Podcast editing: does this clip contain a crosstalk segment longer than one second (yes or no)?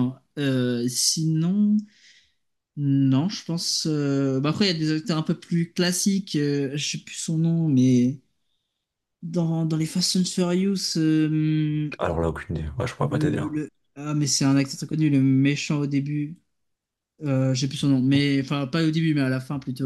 no